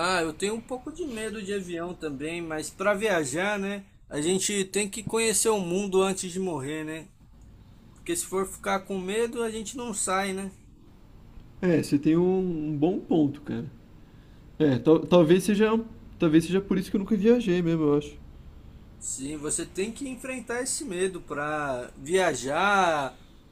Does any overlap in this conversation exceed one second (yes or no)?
no